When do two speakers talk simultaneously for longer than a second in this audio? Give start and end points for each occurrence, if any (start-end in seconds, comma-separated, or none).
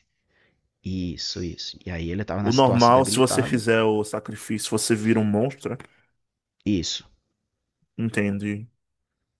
2.4-3.6